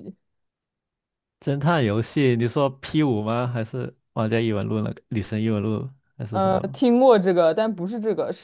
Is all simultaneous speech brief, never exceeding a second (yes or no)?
yes